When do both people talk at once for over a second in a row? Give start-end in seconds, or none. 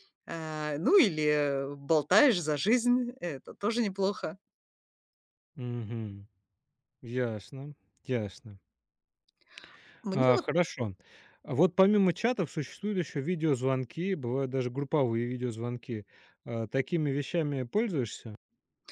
none